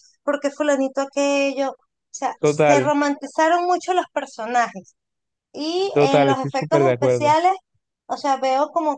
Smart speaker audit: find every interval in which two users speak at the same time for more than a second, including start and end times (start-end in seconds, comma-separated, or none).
5.9-7.3